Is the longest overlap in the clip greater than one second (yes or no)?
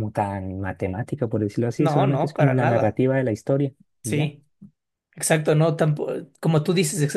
yes